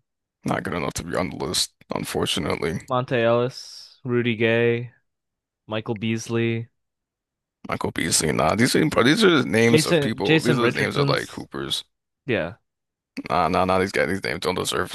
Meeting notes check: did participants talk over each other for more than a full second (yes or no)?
yes